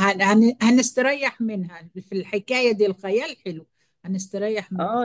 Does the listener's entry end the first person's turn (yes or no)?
yes